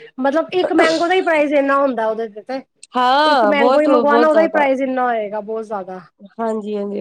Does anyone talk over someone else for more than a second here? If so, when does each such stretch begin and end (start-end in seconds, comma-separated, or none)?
3.3-4.7